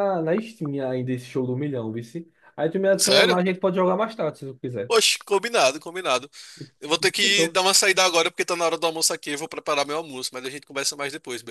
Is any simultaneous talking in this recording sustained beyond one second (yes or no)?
no